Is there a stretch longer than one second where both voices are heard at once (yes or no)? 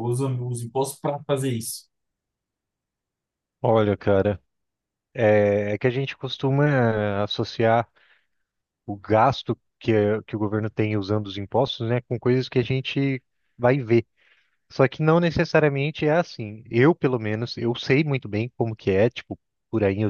no